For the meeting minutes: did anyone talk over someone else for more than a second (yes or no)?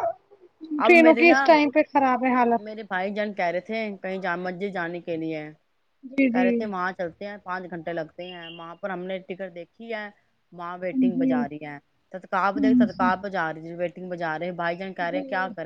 no